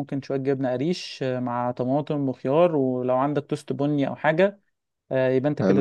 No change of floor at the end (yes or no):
yes